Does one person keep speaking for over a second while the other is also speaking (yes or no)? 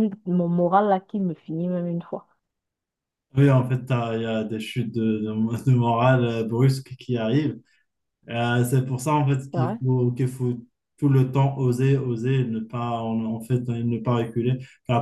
no